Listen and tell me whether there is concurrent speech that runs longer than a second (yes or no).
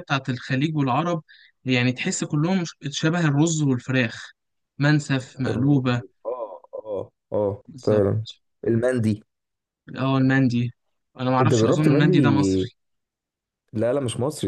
yes